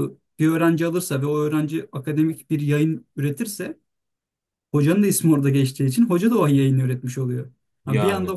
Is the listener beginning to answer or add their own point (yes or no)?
no